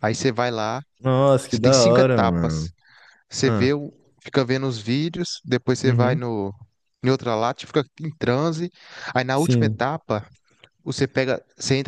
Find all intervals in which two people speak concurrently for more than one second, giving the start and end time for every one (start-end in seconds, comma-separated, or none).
1.5-2.7